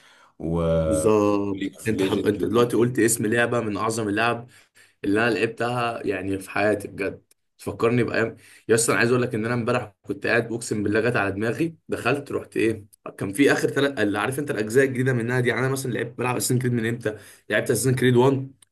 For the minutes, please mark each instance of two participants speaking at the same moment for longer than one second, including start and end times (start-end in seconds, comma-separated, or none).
1.5-3.0